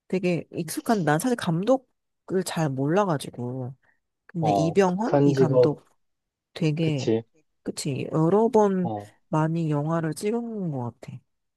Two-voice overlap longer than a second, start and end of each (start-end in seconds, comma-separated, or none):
4.4-5.8